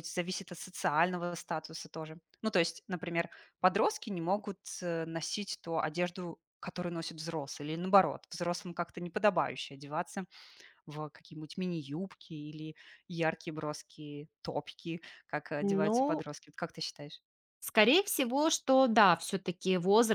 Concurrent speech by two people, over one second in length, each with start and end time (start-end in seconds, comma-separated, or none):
none